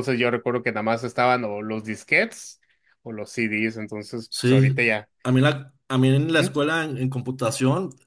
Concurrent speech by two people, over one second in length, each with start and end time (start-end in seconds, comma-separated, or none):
none